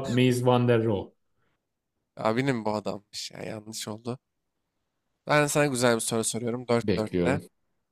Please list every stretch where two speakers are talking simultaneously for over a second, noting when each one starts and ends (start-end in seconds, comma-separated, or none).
none